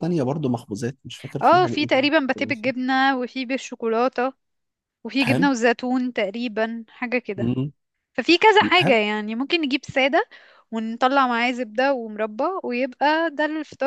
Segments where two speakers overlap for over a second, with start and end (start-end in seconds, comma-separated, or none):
1.4-2.7